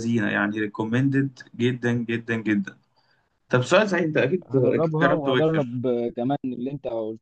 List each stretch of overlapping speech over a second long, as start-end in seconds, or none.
4.5-5.8